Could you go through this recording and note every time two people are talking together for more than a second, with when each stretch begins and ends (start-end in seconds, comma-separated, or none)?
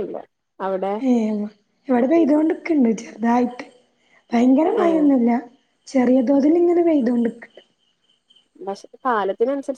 none